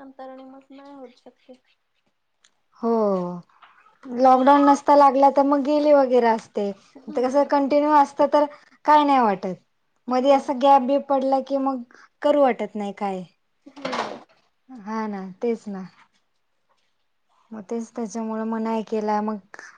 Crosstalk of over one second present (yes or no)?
no